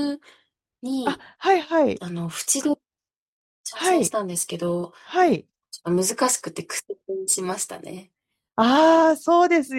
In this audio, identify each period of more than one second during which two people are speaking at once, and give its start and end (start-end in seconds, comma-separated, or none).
none